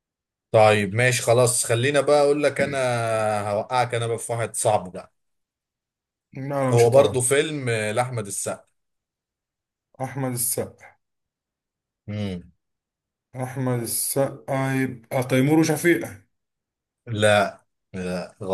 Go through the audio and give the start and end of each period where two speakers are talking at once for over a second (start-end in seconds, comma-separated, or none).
none